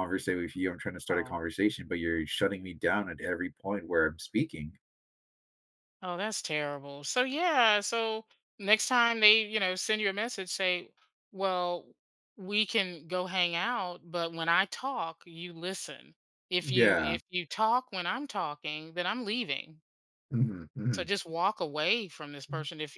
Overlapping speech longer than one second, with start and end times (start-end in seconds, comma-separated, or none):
none